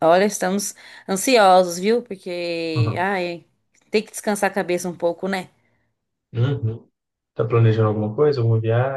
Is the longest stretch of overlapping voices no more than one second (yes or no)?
yes